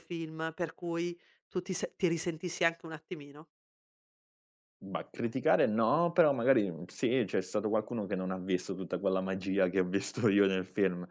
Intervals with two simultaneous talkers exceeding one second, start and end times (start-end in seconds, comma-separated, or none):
none